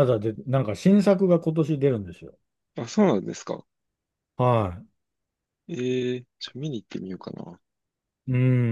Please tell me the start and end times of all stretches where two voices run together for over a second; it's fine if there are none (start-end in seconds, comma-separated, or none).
none